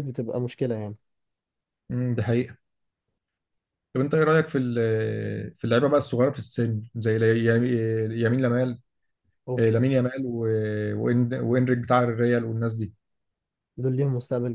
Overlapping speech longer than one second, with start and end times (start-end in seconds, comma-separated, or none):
none